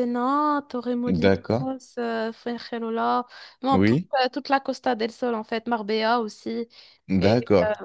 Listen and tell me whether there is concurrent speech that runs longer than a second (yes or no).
no